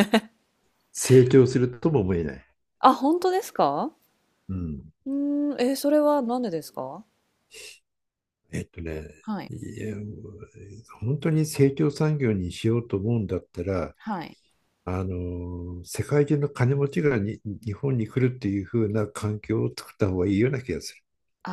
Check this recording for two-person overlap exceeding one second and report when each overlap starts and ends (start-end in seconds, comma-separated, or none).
none